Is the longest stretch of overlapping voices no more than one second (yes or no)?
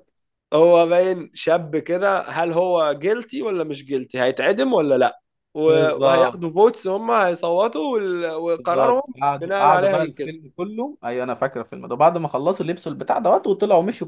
no